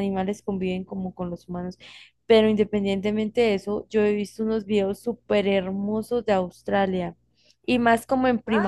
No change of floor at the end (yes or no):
yes